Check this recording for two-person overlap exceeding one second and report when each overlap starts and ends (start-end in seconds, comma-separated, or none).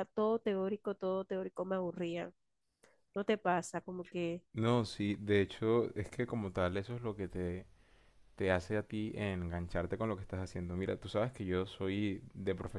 none